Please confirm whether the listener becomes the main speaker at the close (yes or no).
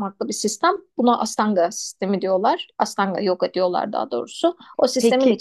no